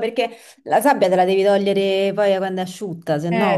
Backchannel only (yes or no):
no